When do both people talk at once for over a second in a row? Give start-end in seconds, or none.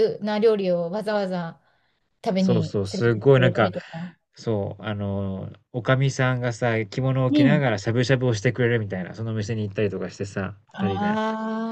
2.4-3.7